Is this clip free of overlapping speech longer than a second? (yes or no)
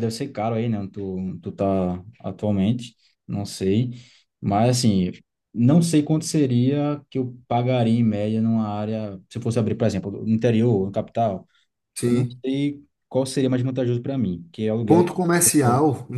yes